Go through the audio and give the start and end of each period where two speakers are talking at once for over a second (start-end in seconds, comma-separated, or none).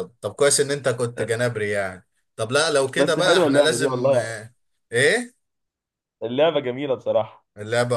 3.0-4.3